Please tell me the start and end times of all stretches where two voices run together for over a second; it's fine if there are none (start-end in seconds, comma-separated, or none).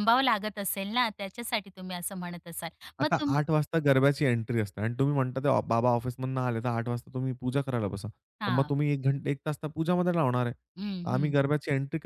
none